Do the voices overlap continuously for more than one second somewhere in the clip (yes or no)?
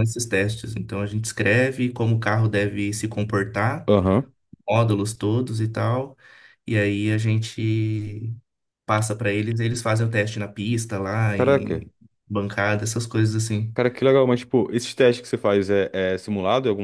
no